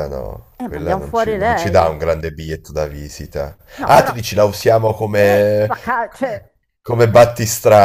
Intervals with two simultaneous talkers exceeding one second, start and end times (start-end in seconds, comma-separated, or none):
0.6-1.9